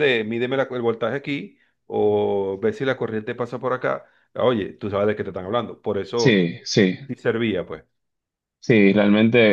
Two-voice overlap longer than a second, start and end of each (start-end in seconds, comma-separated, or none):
none